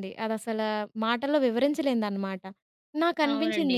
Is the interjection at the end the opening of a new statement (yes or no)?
no